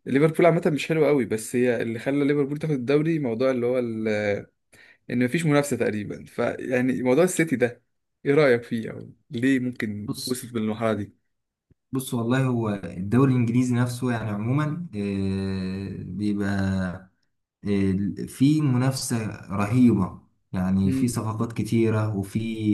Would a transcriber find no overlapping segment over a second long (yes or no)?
yes